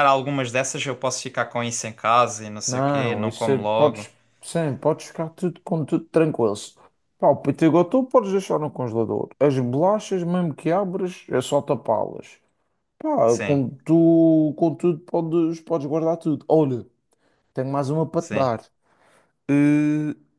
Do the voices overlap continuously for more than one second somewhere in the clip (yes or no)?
yes